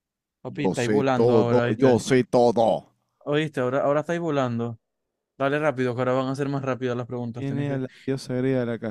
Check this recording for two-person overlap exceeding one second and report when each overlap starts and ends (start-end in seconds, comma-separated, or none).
0.6-2.0